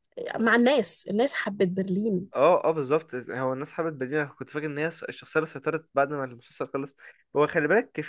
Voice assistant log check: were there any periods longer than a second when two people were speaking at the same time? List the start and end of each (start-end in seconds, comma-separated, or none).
none